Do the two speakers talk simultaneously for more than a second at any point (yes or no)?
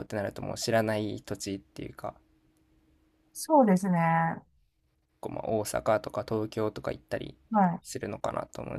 no